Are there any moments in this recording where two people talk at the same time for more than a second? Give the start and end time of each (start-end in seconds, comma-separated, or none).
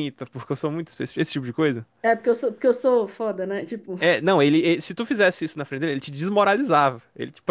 none